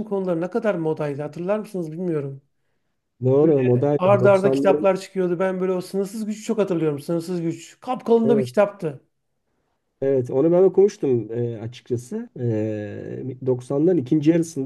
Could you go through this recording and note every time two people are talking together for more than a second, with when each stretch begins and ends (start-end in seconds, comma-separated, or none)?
3.4-4.9